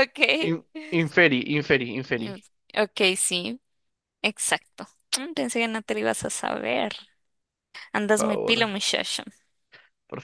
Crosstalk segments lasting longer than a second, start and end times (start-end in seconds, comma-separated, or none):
none